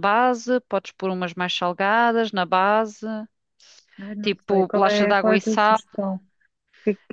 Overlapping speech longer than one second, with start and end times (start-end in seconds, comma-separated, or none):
4.2-5.8